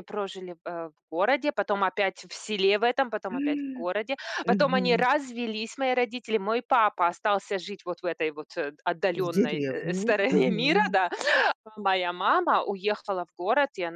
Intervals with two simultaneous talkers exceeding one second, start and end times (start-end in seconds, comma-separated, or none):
9.1-11.0